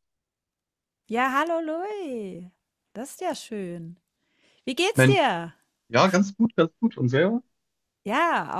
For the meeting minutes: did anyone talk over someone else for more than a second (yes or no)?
no